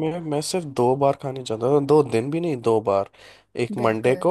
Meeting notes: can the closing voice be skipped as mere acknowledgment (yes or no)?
yes